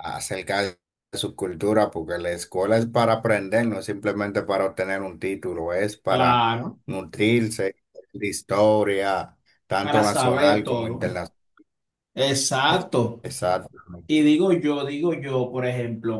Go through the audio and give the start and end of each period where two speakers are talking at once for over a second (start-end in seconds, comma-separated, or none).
9.8-11.0